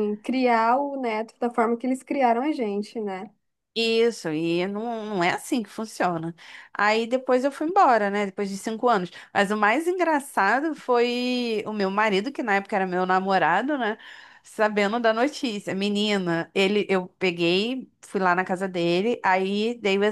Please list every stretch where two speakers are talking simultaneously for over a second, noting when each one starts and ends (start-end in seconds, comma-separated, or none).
none